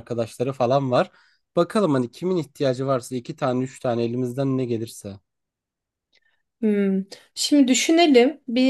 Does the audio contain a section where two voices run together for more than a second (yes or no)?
no